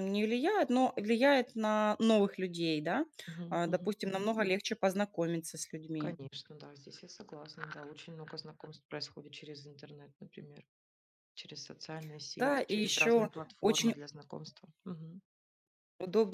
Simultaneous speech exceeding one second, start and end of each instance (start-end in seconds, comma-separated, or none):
12.4-13.9